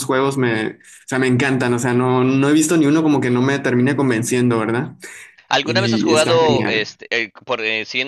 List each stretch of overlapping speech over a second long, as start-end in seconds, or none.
5.6-6.9